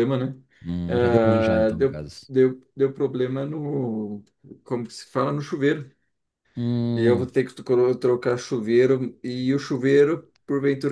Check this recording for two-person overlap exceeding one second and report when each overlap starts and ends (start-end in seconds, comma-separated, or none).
0.9-2.3